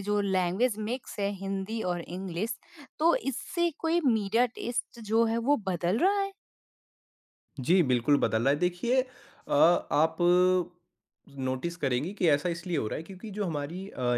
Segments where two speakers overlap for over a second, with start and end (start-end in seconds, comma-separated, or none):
none